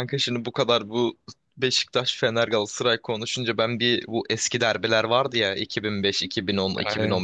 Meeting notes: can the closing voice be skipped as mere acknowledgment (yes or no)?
yes